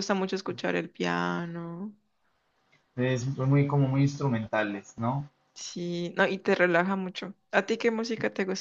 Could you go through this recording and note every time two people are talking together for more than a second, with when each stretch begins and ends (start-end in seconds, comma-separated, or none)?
none